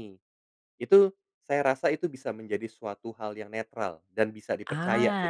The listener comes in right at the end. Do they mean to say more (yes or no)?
yes